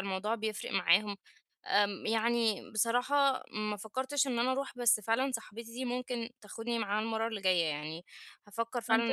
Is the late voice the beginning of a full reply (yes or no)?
yes